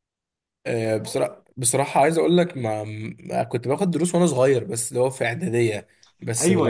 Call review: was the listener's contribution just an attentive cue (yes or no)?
no